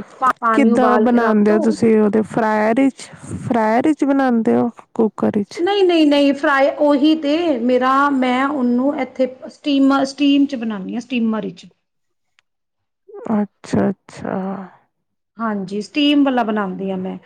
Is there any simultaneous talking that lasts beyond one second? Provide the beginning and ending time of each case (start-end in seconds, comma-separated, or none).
0.5-1.8